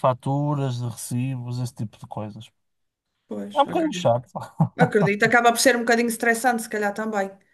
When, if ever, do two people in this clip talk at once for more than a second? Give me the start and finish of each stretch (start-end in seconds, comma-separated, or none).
none